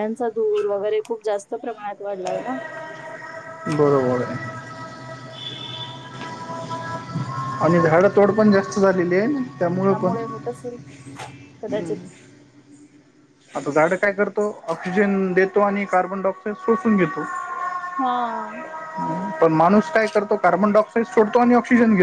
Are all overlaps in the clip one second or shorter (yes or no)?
yes